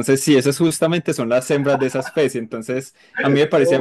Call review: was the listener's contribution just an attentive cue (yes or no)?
yes